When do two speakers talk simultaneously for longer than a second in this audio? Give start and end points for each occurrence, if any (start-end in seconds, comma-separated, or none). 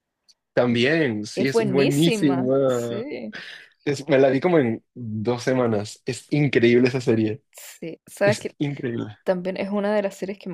1.3-3.1